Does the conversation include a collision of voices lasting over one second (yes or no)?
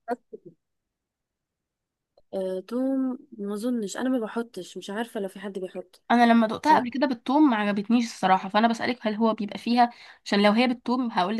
no